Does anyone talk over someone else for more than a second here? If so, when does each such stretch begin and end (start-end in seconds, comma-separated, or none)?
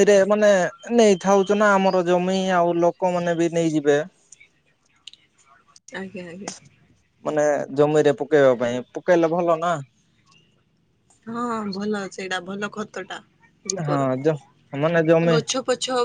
none